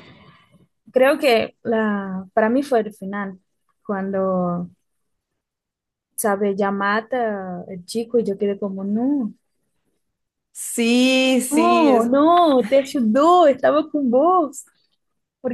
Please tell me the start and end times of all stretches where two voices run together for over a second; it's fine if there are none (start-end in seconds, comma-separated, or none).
none